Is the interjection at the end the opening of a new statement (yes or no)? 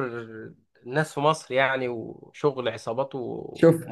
yes